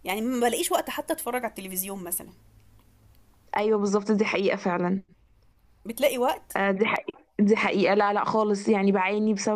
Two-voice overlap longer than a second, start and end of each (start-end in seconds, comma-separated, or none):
none